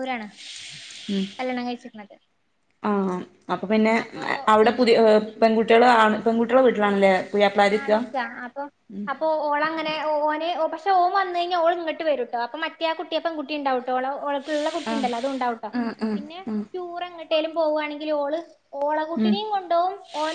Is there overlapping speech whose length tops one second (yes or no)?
no